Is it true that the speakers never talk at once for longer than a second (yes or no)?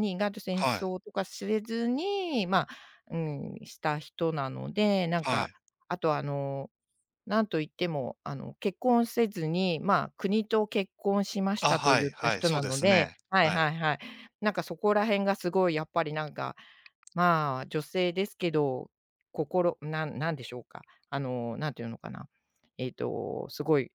no